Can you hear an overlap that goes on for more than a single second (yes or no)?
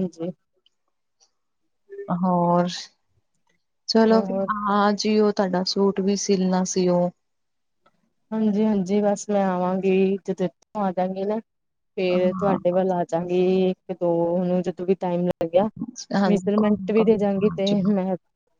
yes